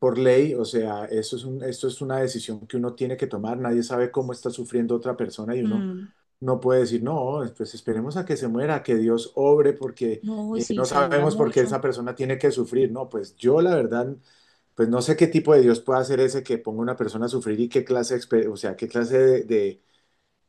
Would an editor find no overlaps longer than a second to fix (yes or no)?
no